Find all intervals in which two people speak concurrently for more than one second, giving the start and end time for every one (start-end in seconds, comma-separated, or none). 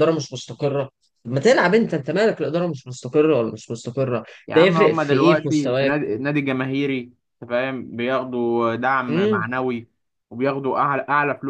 4.5-6.1